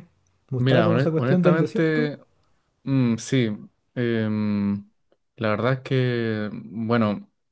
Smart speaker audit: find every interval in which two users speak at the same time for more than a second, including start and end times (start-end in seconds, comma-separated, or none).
0.6-2.1